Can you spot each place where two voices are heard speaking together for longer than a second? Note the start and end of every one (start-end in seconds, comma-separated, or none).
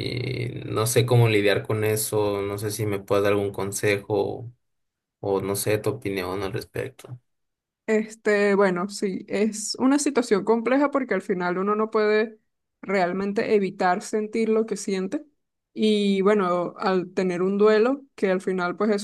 none